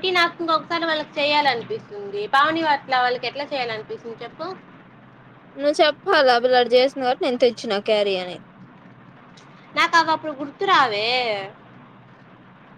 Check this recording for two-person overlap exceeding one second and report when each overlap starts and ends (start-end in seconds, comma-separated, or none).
none